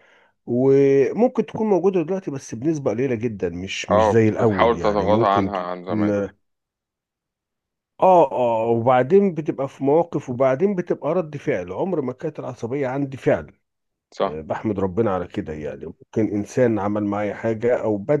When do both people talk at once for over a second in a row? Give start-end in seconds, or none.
3.9-6.2